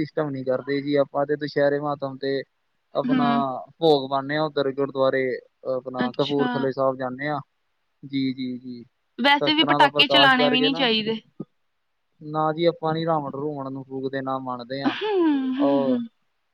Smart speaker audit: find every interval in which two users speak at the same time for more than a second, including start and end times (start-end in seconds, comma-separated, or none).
9.2-10.9